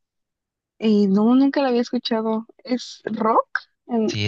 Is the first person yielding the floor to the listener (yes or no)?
yes